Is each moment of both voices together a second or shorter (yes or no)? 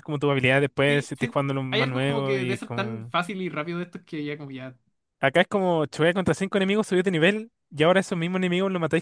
no